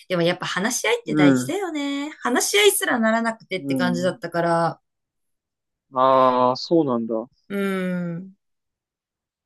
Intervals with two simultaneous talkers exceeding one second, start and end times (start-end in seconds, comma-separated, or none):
none